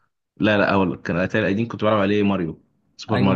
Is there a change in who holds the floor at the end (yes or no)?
yes